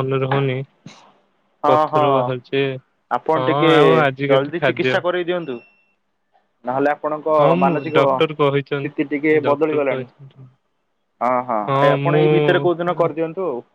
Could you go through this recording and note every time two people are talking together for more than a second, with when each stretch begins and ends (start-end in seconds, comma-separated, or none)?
7.4-10.1